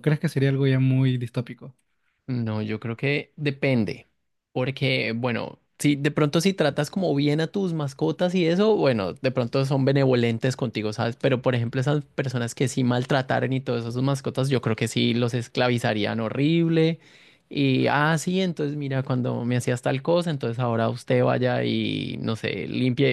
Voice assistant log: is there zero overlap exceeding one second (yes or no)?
yes